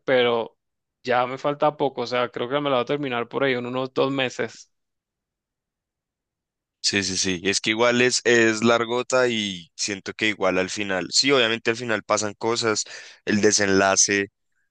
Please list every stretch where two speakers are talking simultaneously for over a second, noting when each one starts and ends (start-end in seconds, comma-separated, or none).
none